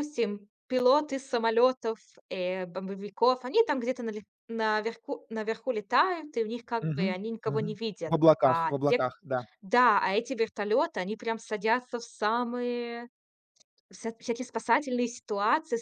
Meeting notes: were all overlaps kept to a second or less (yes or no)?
no